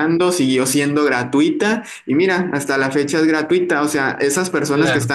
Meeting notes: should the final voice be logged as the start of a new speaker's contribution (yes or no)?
no